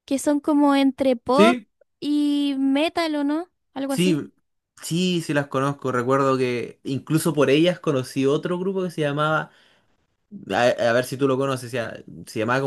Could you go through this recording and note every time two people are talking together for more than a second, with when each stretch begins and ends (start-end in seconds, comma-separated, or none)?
none